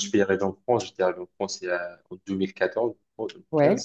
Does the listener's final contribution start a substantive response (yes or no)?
no